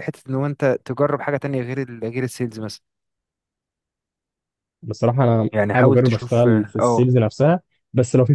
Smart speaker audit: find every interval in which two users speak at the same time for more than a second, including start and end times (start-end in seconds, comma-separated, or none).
5.5-7.1